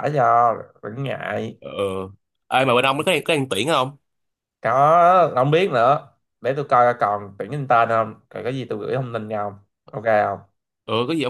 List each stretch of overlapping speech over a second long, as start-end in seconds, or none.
none